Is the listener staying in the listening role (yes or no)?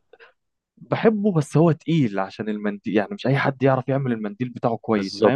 no